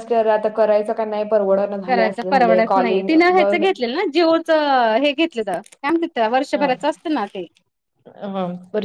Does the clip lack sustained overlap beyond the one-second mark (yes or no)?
yes